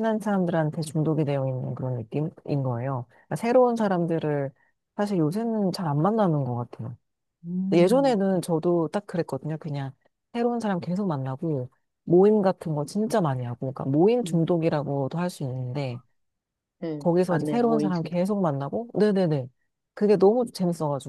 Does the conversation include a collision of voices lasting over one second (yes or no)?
yes